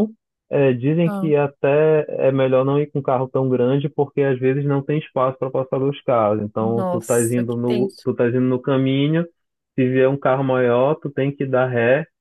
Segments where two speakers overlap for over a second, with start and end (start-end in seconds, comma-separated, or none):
6.6-8.1